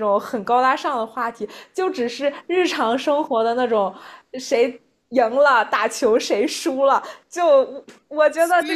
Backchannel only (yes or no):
yes